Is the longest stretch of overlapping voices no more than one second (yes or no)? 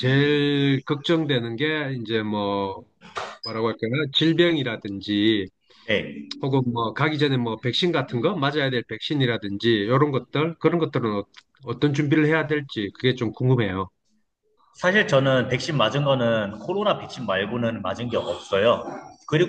yes